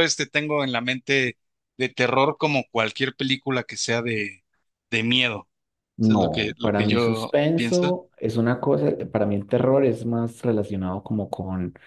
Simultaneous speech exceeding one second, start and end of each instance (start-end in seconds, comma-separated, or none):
6.0-8.0